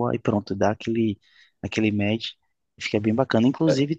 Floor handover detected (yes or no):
no